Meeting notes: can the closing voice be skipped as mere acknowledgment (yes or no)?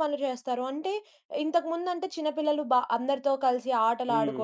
yes